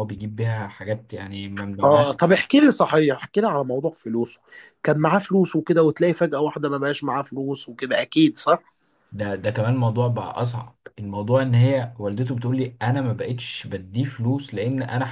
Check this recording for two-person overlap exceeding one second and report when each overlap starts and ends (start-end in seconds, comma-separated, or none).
none